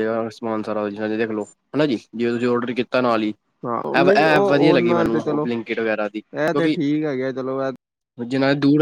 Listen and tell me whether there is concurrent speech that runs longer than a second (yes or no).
yes